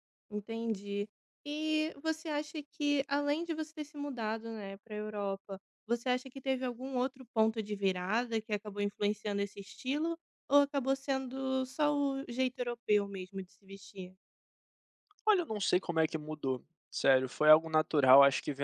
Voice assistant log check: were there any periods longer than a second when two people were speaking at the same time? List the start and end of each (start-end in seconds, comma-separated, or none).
none